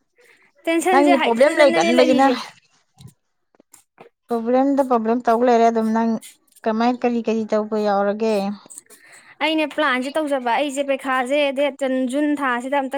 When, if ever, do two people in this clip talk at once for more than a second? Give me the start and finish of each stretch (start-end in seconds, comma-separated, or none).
0.9-2.3